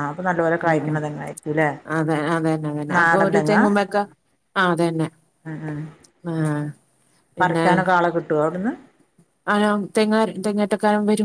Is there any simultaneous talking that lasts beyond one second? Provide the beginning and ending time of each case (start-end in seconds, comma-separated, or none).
none